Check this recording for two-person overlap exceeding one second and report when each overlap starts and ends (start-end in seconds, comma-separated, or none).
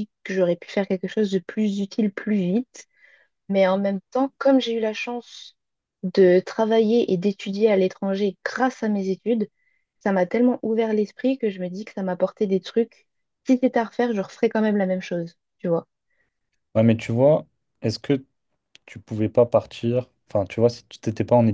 none